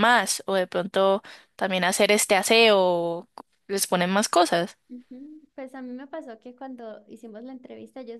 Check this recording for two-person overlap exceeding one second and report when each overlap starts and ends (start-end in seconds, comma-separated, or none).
none